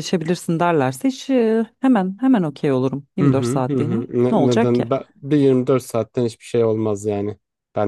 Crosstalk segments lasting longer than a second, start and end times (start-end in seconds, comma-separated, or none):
3.2-4.8